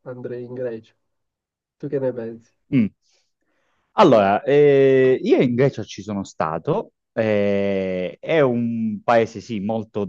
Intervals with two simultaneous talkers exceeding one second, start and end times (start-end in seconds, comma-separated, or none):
none